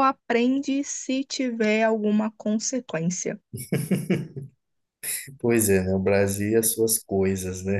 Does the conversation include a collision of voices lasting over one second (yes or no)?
no